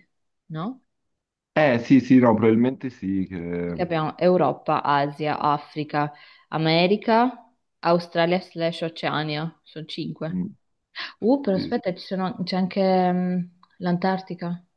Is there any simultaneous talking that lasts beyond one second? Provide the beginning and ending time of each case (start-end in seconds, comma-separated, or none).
none